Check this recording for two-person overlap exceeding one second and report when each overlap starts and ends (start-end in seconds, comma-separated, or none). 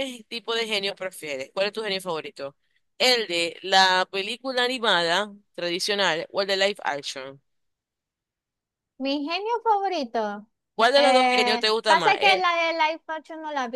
10.9-12.5